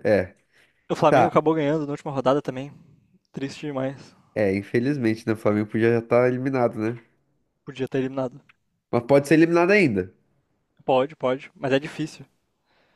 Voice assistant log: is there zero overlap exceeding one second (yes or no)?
yes